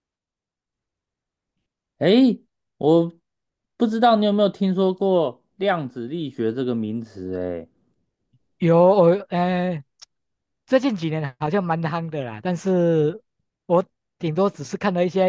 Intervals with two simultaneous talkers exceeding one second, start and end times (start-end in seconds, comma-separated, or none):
none